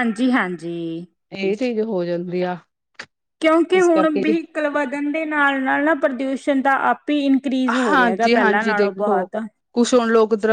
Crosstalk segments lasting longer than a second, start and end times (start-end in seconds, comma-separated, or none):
7.9-9.2